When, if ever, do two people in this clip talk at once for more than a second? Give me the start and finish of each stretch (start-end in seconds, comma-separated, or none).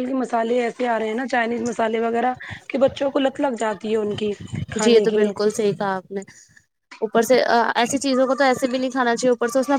none